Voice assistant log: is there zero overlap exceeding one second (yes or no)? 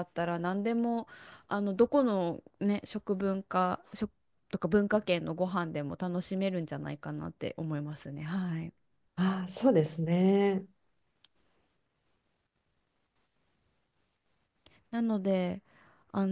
yes